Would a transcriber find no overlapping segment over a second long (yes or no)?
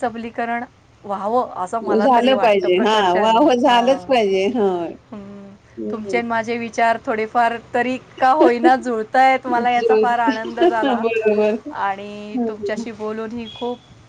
no